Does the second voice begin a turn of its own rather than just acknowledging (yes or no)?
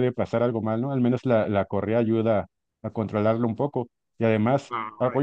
yes